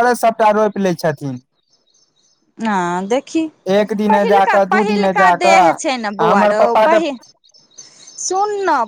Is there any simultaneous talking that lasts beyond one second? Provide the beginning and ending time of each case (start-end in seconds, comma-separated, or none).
4.1-7.0